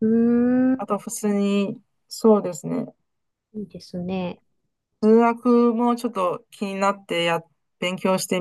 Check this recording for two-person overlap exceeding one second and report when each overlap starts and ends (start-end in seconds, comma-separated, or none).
none